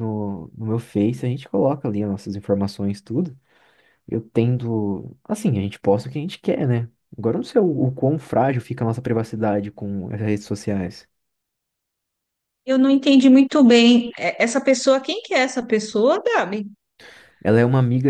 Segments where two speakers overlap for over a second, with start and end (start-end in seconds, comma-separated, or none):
none